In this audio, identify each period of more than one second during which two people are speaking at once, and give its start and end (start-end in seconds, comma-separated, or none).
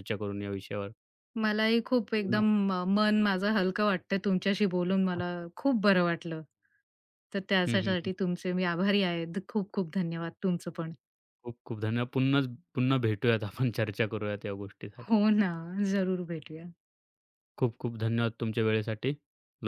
none